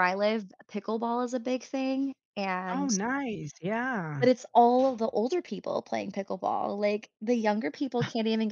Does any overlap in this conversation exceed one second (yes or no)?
no